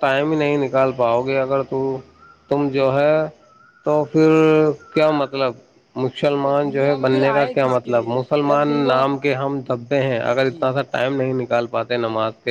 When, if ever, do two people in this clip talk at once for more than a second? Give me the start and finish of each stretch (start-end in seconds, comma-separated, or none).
6.3-9.0